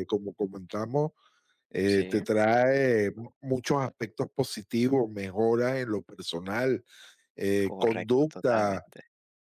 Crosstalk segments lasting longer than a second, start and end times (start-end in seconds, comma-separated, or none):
7.6-8.8